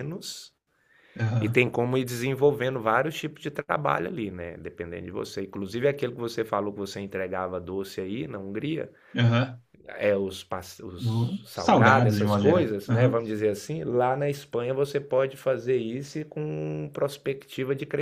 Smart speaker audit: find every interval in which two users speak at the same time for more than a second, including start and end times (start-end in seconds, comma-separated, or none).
11.0-13.2